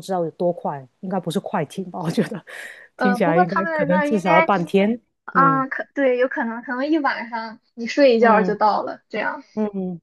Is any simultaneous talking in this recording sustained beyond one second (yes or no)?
yes